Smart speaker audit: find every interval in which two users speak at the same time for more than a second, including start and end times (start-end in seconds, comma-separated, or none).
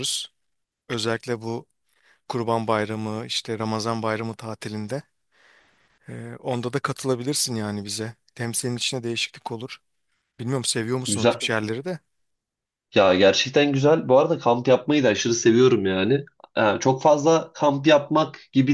none